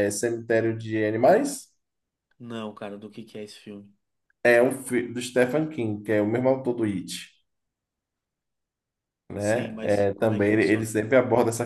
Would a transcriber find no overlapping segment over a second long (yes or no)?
no